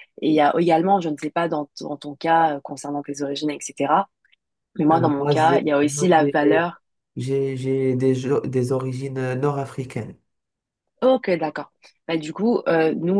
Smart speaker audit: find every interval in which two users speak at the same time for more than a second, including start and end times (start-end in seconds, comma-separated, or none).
4.9-6.7